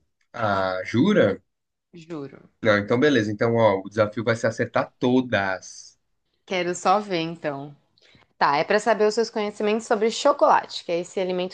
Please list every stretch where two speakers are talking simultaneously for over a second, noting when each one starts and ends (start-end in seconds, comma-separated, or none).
none